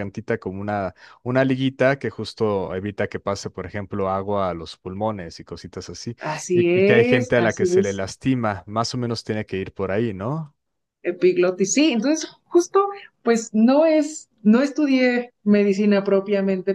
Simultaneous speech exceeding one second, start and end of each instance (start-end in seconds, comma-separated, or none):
6.5-8.0